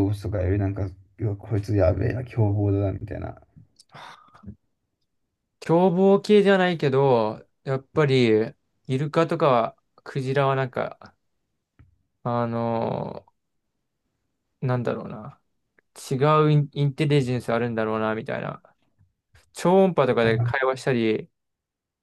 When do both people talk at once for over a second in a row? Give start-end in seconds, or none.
none